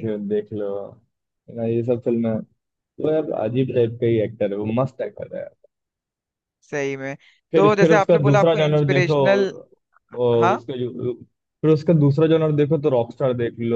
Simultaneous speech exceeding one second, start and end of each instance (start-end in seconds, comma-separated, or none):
7.6-9.2